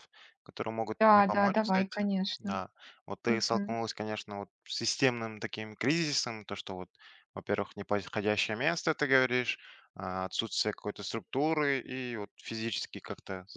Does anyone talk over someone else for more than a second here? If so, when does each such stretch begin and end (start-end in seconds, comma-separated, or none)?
1.0-2.6